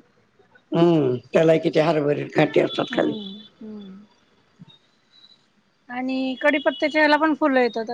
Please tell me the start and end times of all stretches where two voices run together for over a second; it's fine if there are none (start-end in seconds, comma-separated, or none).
none